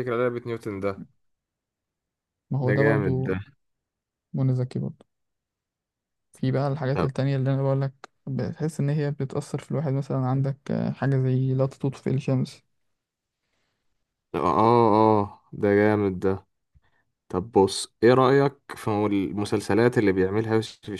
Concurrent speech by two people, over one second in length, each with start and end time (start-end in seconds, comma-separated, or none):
none